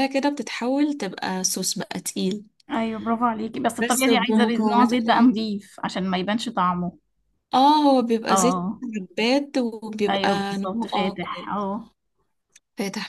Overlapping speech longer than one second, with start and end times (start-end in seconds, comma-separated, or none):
3.8-5.3, 10.1-11.7